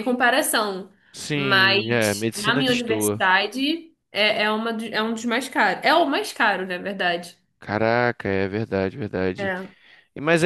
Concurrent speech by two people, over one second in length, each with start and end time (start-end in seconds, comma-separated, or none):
1.3-3.2